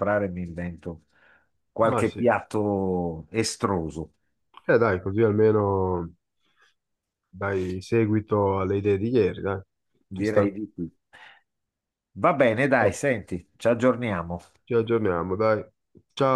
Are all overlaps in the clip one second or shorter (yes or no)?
yes